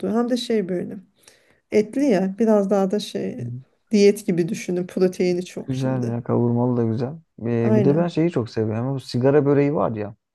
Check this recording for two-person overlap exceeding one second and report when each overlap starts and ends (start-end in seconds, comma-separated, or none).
none